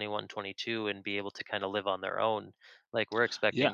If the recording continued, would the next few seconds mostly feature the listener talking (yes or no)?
no